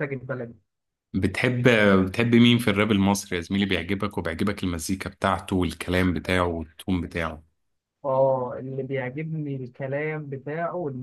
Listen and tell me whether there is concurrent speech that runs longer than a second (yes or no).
no